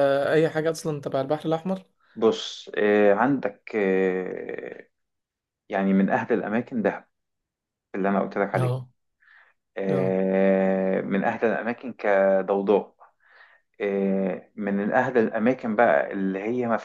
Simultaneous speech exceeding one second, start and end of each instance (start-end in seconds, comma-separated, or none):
none